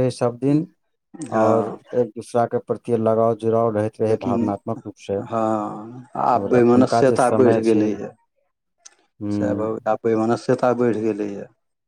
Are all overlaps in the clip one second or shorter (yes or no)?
no